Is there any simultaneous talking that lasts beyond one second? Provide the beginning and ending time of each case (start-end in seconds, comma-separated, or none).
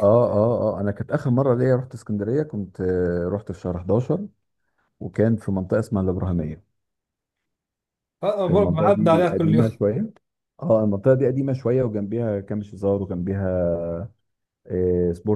8.5-9.8